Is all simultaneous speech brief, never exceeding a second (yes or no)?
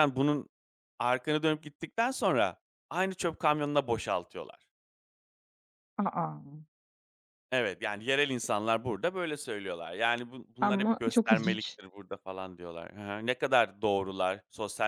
no